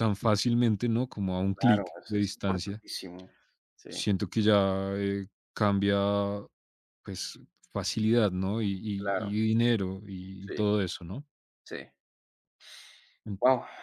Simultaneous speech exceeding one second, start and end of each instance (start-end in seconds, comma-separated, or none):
1.5-2.8